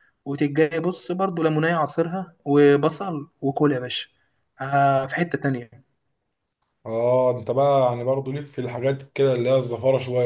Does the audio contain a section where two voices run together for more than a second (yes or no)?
no